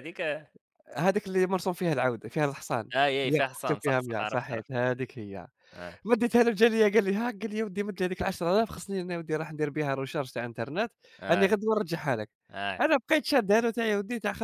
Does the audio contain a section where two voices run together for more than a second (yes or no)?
yes